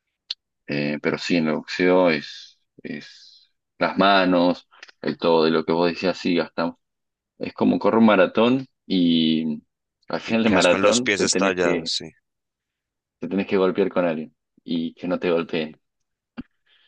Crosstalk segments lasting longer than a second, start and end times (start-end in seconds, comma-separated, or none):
10.3-11.9